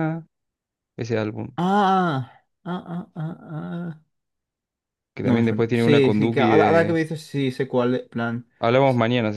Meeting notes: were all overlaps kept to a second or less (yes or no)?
no